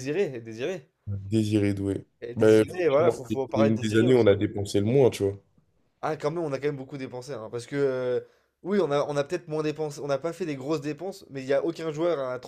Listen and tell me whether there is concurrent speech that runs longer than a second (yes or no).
yes